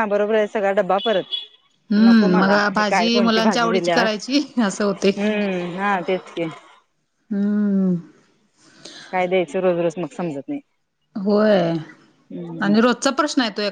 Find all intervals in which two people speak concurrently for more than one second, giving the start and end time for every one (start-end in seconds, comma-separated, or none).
2.0-4.1